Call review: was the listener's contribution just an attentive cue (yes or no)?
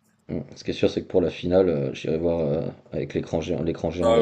no